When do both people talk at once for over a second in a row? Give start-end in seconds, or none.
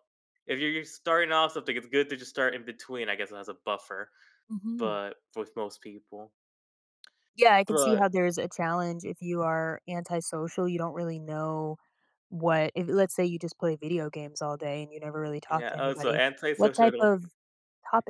15.5-17.1